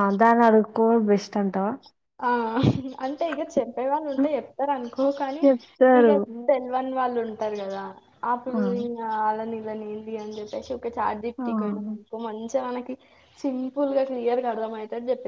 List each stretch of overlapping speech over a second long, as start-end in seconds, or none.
none